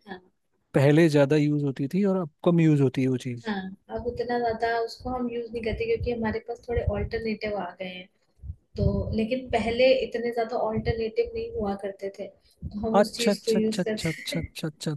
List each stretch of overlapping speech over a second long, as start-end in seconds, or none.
13.0-14.4